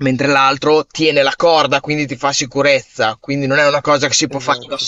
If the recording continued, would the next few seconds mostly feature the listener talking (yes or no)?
no